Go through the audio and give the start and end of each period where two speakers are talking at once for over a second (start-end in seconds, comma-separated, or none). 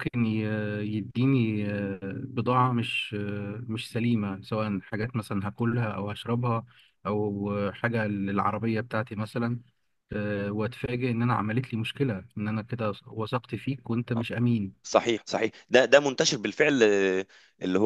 none